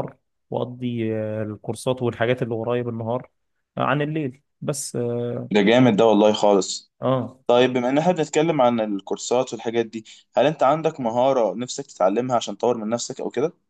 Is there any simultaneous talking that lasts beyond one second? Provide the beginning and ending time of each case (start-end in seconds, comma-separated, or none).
none